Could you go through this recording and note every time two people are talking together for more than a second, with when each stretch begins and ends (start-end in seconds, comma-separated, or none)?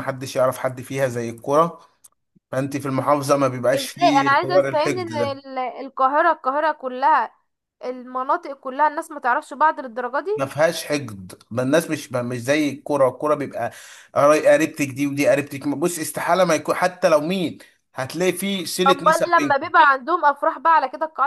3.7-5.4